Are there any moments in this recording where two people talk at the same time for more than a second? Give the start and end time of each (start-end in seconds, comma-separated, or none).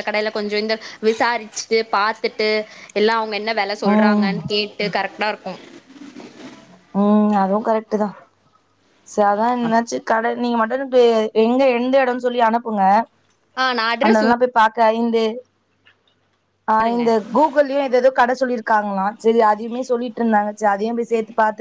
none